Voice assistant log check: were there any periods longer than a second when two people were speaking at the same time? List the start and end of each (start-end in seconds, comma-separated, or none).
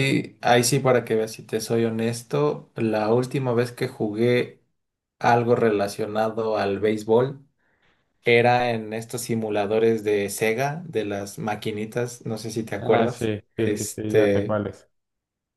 12.8-14.6